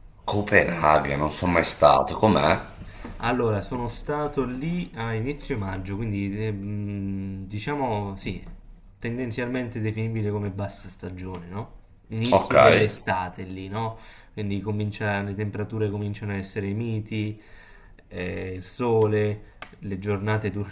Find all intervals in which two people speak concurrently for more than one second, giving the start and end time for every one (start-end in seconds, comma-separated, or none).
none